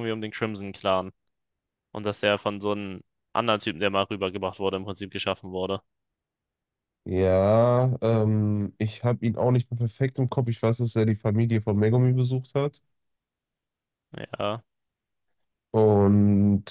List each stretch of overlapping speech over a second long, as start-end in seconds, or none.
none